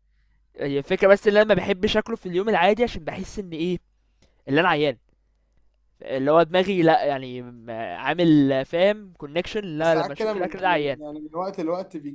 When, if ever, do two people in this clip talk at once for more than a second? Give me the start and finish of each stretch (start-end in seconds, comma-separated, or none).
9.8-11.0